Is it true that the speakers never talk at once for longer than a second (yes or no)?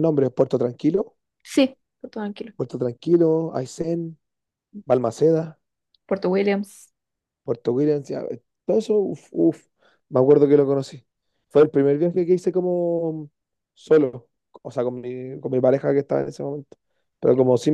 yes